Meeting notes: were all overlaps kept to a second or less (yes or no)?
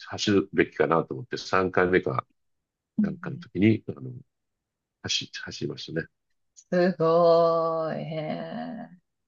yes